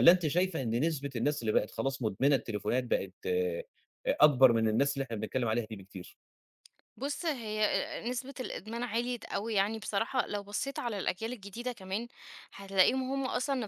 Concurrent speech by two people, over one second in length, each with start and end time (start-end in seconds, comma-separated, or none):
none